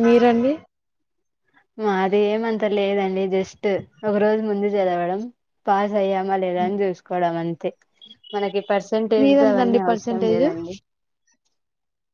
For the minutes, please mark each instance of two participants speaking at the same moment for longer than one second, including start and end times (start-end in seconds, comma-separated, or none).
9.2-10.5